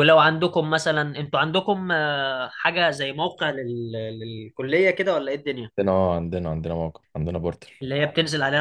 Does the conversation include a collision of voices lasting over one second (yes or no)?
no